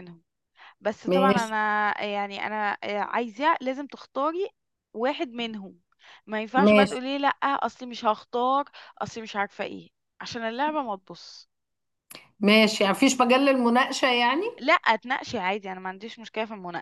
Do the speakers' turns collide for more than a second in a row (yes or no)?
no